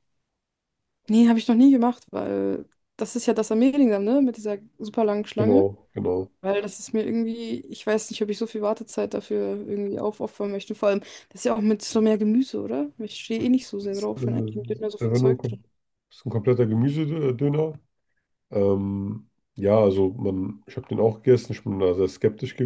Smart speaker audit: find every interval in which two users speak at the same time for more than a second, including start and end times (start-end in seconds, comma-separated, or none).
13.8-15.6